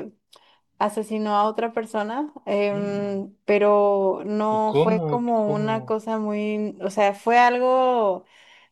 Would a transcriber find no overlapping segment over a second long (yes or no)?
no